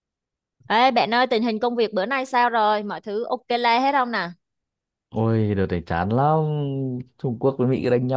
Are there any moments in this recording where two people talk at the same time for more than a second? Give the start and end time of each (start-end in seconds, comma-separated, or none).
none